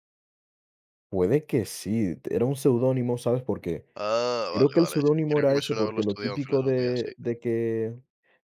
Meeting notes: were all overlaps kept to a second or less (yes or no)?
no